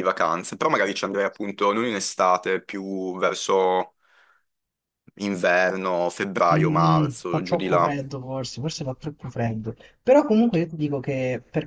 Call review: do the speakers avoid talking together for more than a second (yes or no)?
no